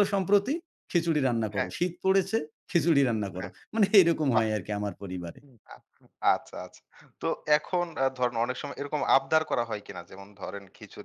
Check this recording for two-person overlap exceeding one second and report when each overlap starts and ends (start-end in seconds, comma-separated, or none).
none